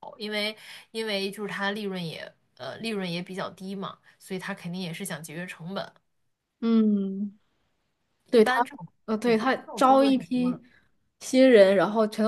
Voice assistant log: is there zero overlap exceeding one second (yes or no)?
no